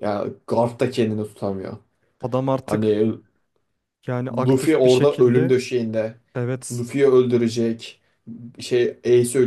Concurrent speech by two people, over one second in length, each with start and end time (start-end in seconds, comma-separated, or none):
4.3-5.5